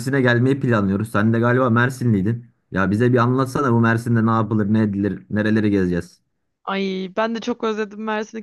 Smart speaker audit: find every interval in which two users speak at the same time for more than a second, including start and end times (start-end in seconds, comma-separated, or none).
none